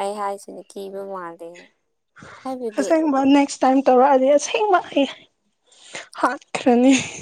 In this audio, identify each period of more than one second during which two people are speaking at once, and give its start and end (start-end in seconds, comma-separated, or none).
none